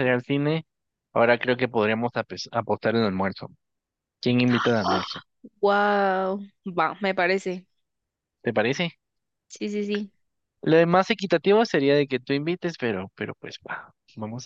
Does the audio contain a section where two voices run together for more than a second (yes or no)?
no